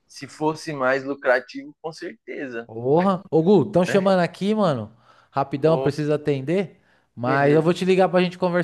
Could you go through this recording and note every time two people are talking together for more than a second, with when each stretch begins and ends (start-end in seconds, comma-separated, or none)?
none